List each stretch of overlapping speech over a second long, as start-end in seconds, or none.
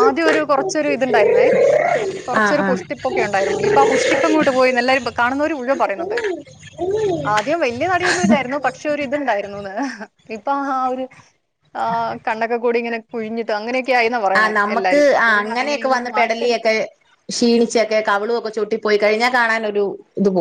14.4-16.7